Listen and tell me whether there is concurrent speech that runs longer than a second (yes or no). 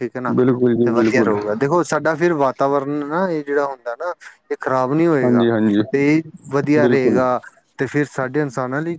no